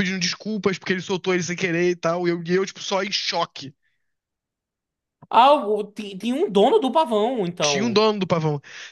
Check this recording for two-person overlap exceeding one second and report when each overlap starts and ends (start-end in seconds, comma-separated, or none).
none